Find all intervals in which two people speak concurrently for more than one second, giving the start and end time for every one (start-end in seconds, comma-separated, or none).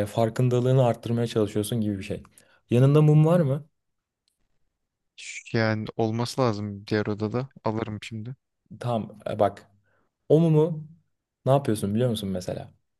none